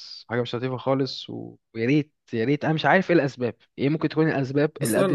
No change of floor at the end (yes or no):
no